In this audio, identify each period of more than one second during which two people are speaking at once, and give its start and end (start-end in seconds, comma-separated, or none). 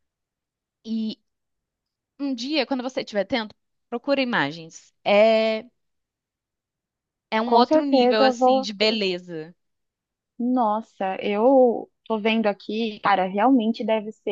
7.4-8.7